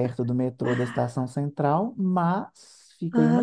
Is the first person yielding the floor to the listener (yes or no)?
no